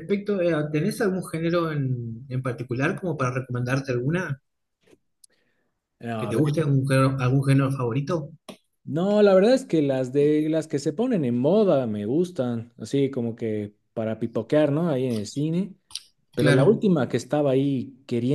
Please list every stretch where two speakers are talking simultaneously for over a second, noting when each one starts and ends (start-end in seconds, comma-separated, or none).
none